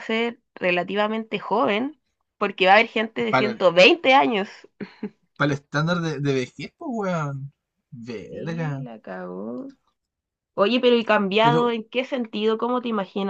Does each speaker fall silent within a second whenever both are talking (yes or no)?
yes